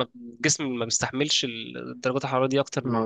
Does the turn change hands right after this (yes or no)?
yes